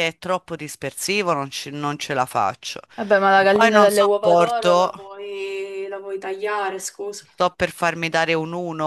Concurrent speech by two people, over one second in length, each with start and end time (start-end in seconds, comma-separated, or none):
3.4-4.9